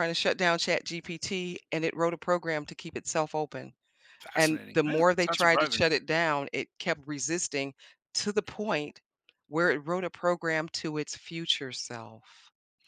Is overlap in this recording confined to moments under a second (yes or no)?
no